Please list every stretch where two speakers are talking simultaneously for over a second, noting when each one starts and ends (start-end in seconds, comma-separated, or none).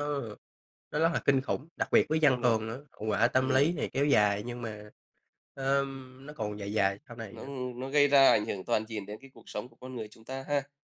none